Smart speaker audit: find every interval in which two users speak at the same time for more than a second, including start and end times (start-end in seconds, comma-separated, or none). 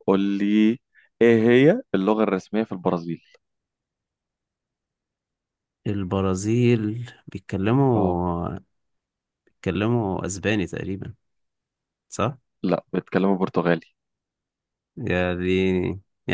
none